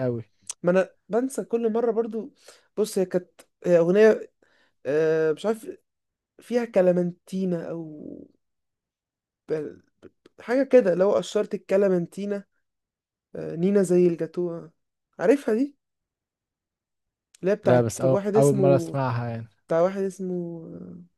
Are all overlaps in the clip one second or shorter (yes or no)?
no